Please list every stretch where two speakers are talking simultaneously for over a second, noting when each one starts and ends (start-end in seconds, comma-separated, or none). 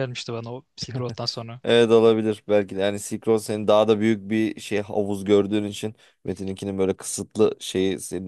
none